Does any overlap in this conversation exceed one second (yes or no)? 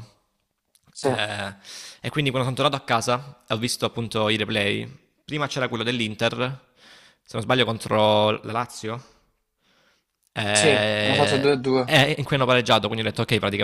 yes